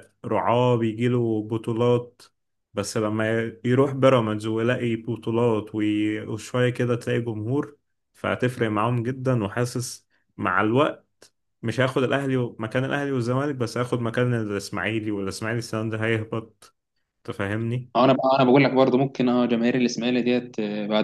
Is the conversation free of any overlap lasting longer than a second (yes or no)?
yes